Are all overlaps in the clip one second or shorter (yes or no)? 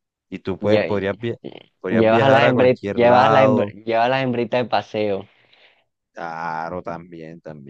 no